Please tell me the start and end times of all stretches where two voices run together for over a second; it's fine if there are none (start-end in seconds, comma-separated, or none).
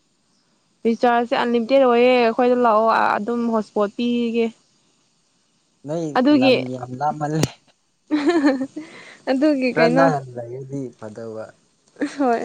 none